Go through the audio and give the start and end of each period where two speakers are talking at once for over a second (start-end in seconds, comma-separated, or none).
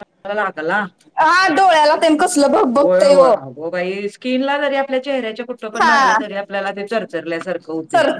none